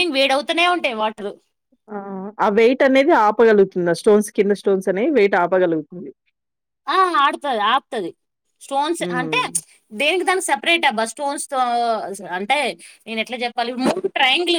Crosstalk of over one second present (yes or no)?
no